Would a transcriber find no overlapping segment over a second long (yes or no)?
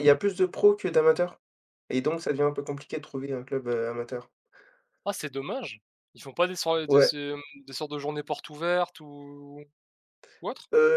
yes